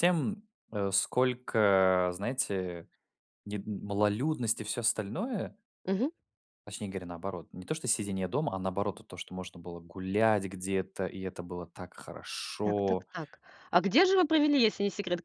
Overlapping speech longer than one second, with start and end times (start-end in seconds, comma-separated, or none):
none